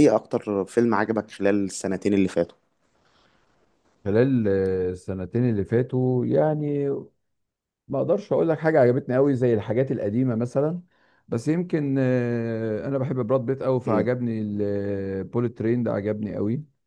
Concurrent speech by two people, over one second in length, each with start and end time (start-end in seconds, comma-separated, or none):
none